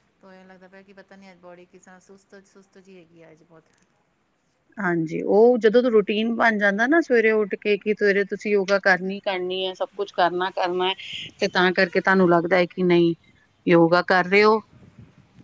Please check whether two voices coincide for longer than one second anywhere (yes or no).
no